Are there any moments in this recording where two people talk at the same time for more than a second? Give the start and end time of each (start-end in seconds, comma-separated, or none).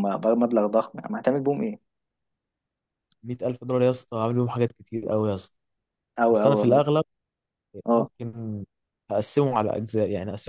none